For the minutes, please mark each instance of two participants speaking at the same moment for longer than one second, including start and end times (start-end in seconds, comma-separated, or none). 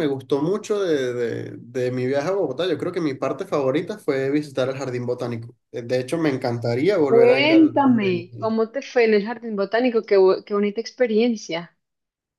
7.1-8.5